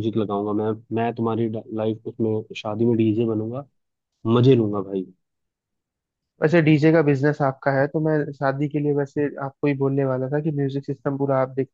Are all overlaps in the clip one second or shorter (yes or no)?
yes